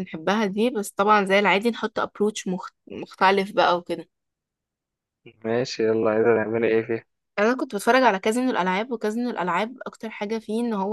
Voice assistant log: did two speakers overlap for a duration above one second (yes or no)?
no